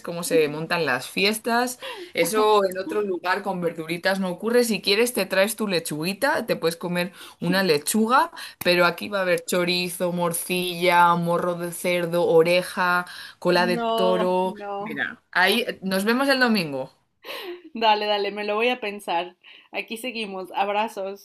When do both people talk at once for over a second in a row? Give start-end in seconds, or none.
13.5-15.0